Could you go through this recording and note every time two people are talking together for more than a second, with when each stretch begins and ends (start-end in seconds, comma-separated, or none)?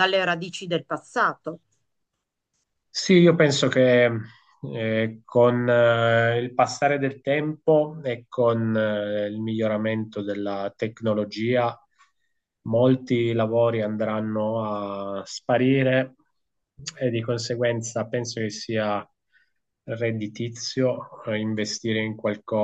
none